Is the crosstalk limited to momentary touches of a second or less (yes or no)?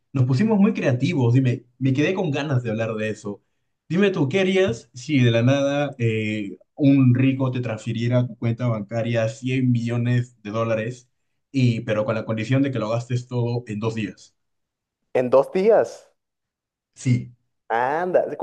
yes